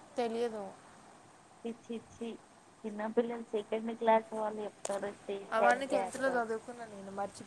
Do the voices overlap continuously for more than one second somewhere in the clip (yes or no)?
no